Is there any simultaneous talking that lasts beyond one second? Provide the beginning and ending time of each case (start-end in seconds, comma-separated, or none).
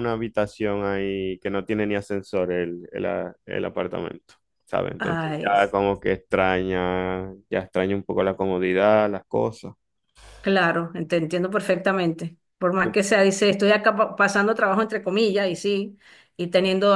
none